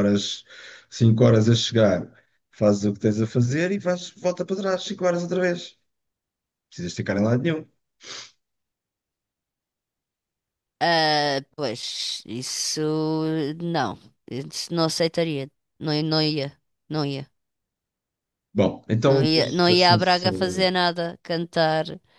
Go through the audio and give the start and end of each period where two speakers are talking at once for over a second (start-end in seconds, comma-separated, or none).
19.0-20.7